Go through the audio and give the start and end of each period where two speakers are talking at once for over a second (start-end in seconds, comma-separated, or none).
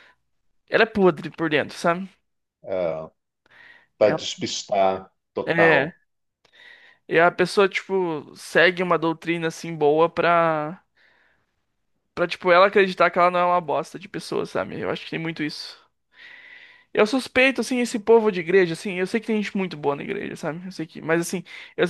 none